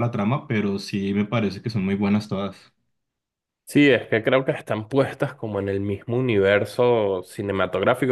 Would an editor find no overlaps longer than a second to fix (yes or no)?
yes